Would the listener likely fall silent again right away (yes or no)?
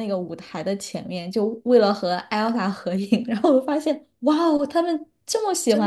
no